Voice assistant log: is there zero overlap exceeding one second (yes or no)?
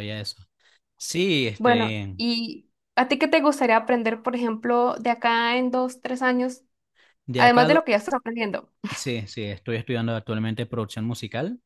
yes